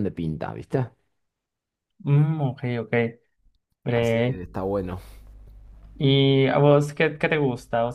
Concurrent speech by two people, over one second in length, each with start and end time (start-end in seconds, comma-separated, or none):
none